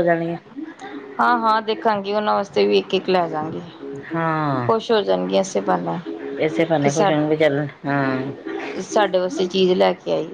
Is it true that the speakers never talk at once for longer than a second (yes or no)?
yes